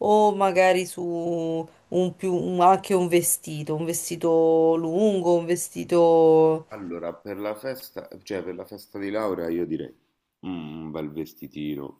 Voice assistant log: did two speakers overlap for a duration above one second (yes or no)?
no